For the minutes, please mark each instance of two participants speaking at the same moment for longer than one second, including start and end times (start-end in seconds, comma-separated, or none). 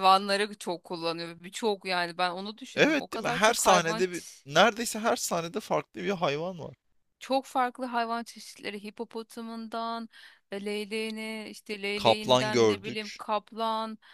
2.8-4.4, 11.9-13.2